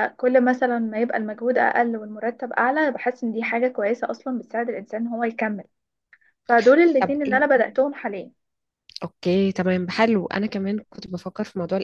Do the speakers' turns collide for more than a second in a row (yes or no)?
no